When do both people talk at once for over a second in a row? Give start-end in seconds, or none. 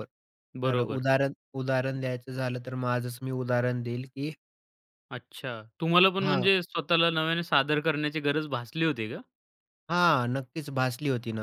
none